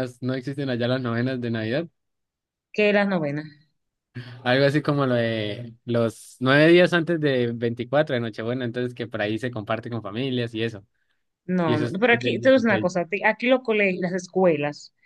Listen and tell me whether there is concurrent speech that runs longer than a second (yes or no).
yes